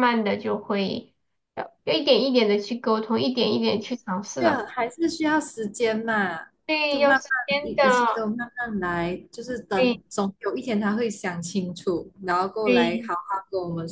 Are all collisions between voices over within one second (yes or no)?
no